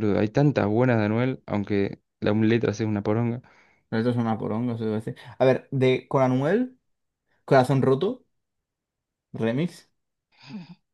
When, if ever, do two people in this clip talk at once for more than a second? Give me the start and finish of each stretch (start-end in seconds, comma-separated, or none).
none